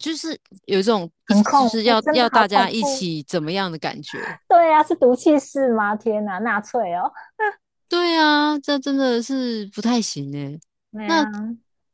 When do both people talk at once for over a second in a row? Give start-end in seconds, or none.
1.2-3.1